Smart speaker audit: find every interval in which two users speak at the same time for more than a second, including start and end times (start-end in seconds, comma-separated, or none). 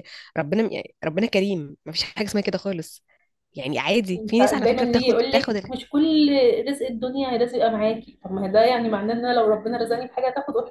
4.2-5.7